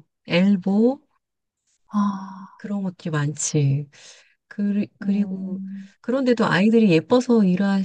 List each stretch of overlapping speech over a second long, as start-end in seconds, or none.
none